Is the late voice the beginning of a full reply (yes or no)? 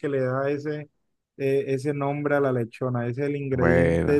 no